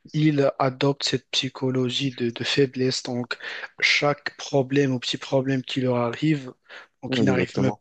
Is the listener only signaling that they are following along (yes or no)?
yes